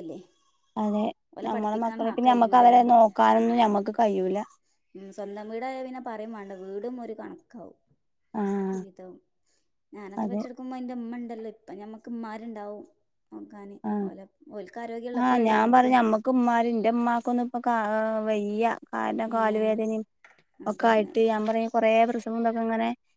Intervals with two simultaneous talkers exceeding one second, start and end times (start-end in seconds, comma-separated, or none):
1.5-3.1